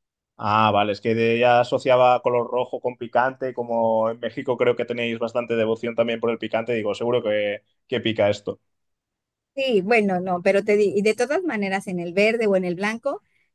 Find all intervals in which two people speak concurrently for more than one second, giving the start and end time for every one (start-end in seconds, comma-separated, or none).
none